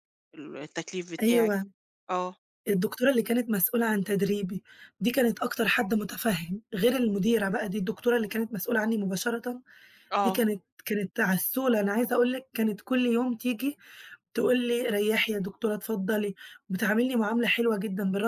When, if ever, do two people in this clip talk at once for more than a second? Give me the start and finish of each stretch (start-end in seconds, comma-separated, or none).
none